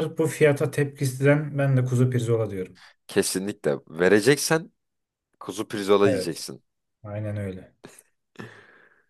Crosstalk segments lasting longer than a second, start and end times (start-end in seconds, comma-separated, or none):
none